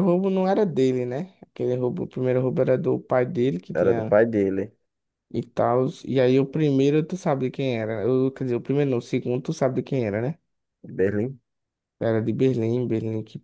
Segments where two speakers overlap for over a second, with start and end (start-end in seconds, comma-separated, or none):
none